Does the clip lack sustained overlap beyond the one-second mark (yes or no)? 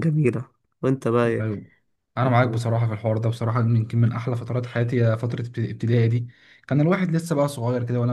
yes